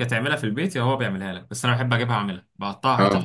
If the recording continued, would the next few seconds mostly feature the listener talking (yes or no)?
no